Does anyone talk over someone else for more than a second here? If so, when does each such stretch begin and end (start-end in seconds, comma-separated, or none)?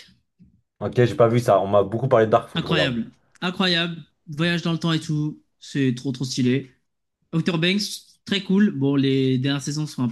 none